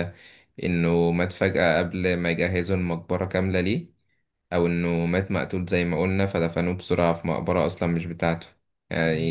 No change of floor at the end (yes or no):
yes